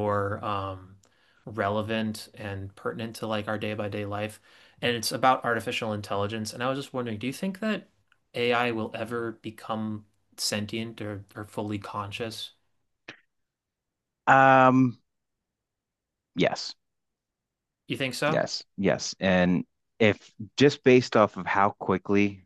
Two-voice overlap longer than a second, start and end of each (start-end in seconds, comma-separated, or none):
none